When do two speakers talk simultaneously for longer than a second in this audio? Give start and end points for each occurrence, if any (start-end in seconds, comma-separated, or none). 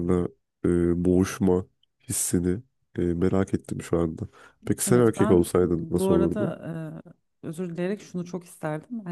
4.9-6.5